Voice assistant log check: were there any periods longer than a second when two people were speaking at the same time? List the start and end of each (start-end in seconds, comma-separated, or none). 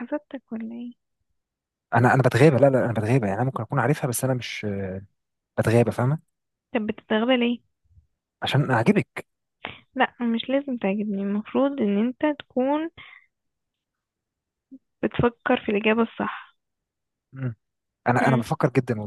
none